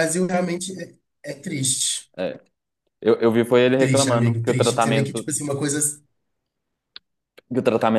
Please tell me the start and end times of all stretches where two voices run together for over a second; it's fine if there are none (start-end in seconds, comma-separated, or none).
3.8-5.3